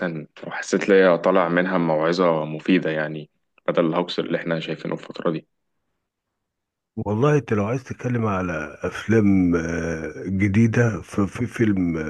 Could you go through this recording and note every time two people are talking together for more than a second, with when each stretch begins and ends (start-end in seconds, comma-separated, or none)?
none